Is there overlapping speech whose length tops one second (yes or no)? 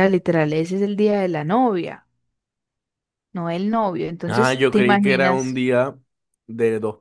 yes